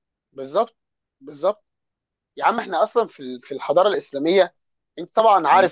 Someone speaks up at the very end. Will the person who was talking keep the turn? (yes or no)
yes